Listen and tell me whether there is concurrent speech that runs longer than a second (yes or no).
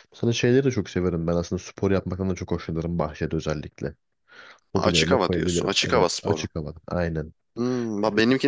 yes